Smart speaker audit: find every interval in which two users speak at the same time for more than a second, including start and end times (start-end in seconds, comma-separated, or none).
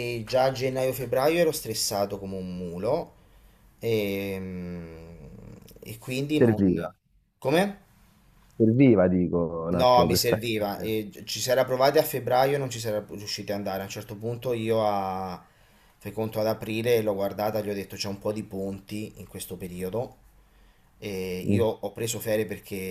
9.7-10.9